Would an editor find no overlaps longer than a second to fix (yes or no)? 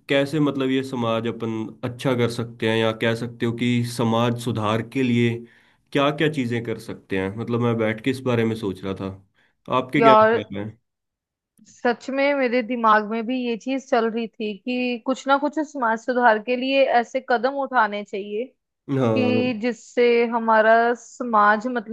yes